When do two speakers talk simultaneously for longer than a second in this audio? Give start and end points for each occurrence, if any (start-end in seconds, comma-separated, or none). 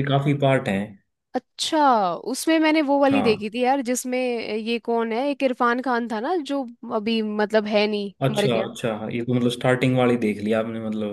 none